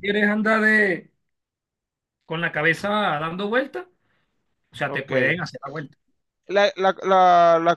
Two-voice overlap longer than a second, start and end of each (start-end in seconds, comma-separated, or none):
none